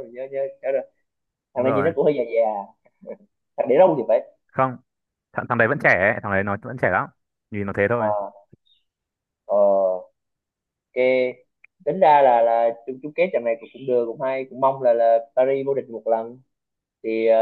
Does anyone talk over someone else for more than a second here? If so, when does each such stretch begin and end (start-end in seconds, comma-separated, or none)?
none